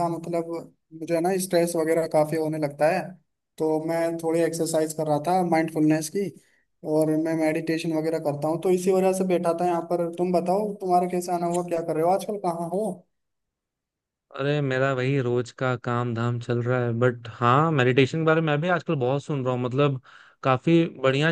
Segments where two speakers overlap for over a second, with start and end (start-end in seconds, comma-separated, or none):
none